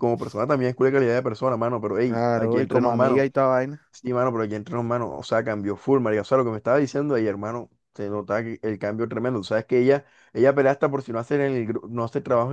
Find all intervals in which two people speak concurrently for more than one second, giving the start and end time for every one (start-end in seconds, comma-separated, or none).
2.0-3.3